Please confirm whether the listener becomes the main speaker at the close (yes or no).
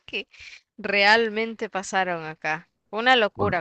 yes